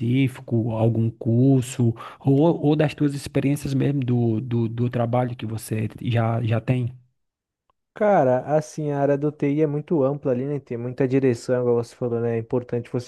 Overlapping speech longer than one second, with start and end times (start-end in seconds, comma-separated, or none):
none